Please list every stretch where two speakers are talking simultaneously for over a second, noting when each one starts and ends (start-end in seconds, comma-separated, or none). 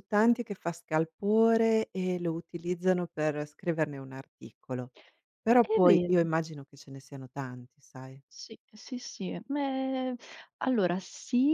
none